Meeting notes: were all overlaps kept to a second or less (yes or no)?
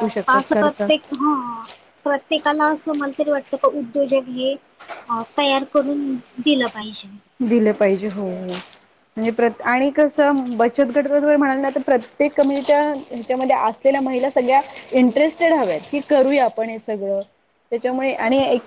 yes